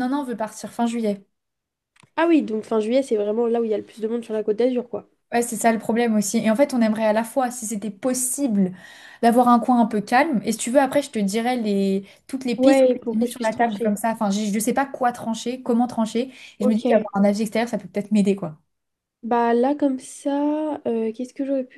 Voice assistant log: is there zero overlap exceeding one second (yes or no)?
no